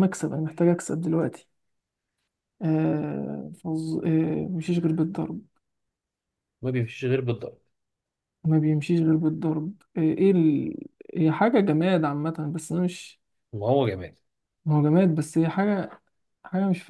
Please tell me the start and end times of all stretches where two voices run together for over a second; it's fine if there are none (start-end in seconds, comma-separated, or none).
none